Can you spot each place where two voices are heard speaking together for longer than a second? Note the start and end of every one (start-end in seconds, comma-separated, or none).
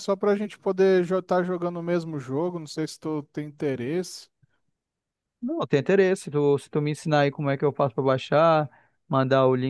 none